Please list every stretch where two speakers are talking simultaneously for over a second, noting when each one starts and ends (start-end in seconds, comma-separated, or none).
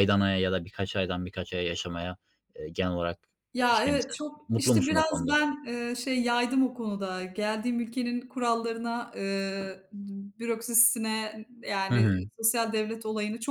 3.6-5.4